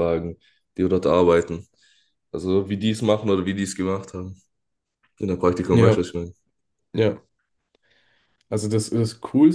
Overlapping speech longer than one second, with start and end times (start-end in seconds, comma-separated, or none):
none